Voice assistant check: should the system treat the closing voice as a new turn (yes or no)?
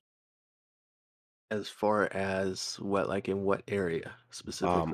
yes